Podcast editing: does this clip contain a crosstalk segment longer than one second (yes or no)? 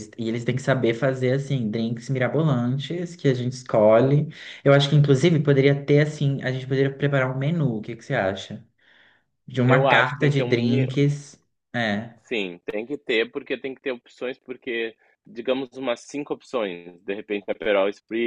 yes